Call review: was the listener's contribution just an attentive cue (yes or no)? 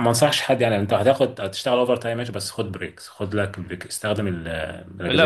no